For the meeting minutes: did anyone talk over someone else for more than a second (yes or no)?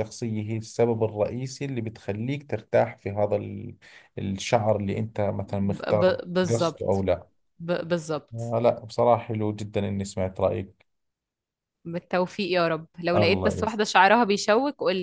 yes